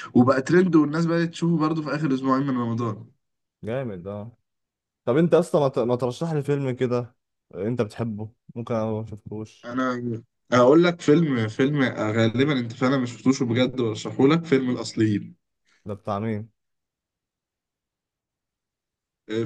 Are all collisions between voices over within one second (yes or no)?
yes